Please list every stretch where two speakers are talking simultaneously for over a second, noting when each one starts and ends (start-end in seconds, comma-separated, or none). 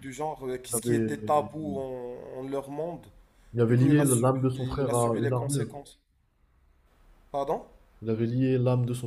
3.7-5.7